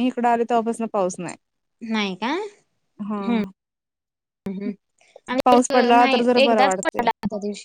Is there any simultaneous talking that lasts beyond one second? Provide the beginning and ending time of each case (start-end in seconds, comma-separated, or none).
5.4-7.0